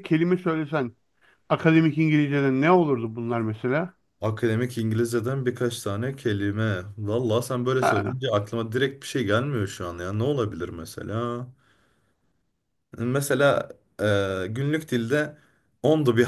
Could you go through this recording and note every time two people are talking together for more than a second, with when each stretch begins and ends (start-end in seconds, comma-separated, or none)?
none